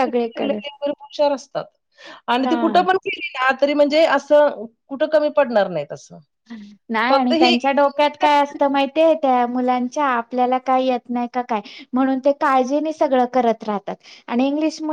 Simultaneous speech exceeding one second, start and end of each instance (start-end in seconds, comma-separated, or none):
none